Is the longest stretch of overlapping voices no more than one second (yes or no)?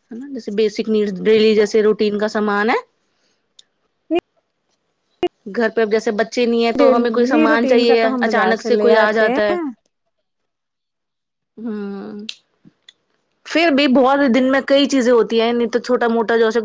no